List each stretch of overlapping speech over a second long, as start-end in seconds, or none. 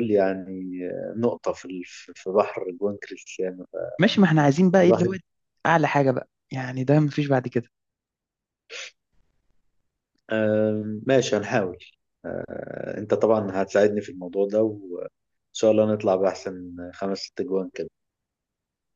none